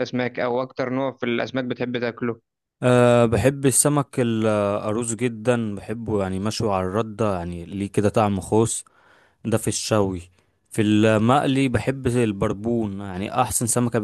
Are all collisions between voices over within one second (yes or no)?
yes